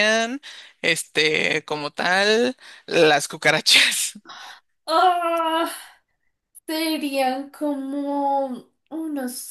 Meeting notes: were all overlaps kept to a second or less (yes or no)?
yes